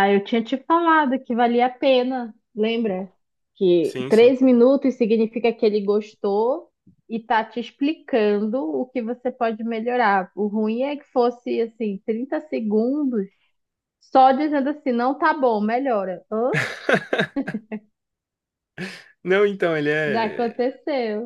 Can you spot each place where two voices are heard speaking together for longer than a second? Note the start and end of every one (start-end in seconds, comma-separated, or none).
none